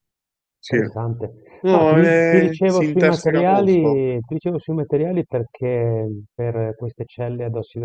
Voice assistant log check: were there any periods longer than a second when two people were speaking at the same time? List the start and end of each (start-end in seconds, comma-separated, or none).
1.7-4.0